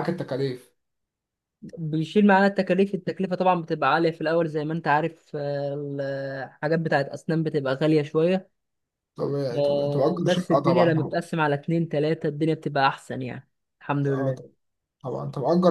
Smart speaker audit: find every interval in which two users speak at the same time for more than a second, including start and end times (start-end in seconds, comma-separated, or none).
9.6-10.9